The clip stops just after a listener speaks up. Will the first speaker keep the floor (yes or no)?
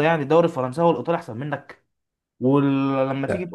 yes